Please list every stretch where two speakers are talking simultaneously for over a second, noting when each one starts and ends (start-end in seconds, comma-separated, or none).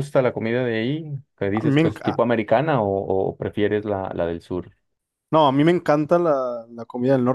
none